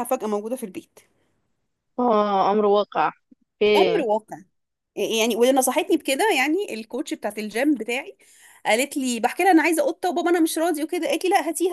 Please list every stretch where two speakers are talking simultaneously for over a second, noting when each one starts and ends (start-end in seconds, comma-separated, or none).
none